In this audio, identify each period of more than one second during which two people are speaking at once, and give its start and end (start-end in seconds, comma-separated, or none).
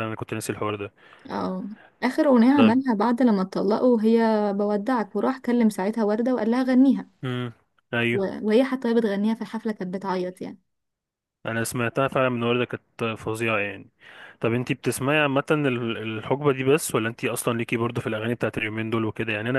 none